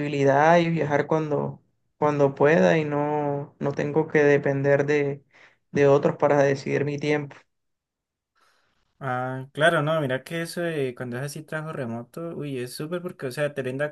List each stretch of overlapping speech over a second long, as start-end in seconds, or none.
none